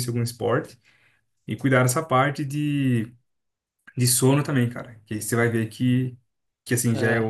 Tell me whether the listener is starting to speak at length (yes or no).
no